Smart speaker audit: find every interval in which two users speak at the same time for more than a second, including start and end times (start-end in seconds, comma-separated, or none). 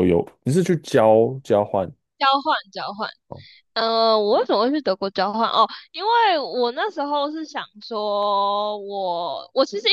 none